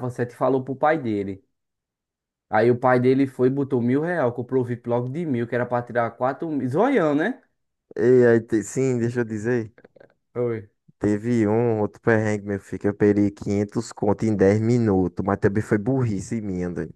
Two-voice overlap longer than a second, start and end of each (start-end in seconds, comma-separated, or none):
none